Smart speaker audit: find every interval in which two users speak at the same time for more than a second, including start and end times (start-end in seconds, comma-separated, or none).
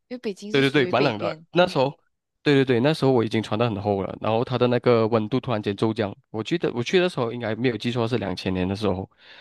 0.5-1.9